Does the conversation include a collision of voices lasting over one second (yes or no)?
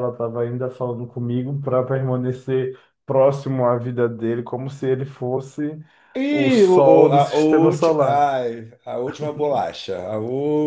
yes